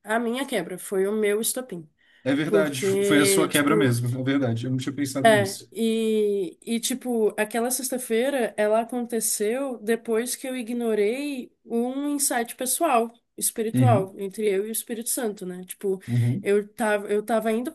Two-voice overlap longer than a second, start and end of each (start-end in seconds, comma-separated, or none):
2.4-3.9